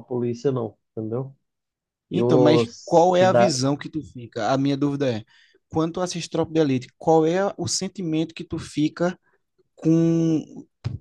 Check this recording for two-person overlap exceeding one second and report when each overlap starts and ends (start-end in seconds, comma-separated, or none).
2.1-3.6